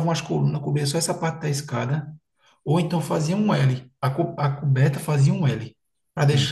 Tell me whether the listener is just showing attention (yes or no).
yes